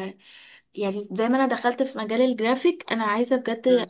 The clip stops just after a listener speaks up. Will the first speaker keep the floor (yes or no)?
yes